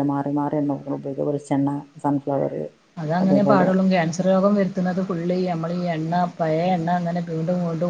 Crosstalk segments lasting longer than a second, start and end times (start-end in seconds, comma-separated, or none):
none